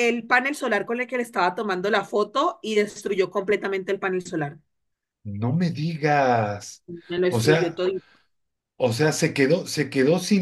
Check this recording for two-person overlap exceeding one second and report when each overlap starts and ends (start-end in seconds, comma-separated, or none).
none